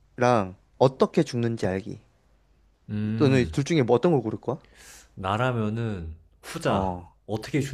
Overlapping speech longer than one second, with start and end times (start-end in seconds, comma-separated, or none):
none